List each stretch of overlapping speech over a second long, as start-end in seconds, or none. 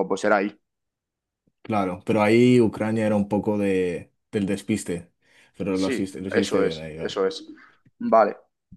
5.7-7.2